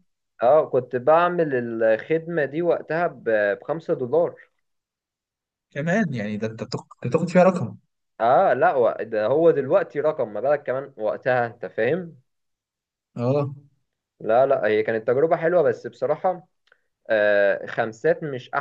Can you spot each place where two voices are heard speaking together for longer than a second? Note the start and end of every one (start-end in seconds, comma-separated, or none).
none